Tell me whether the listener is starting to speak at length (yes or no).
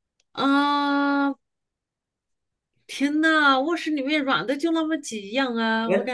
yes